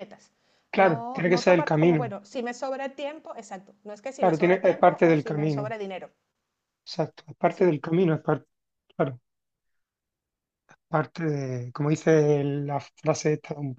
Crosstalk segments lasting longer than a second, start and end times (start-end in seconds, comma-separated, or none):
0.7-2.1, 4.2-5.7